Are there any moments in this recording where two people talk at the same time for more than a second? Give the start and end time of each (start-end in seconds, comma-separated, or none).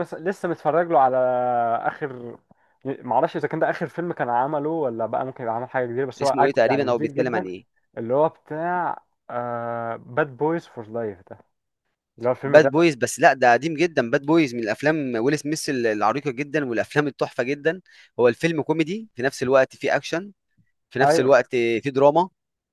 6.2-7.5